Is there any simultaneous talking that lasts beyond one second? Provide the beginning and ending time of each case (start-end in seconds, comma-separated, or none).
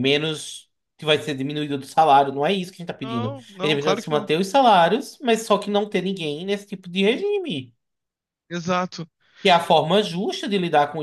3.0-4.3